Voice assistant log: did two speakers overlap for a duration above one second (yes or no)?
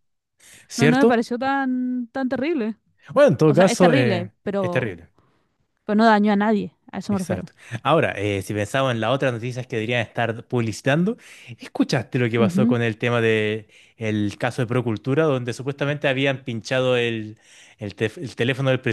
yes